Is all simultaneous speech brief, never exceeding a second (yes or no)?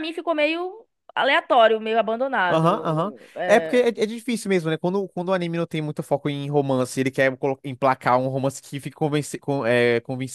no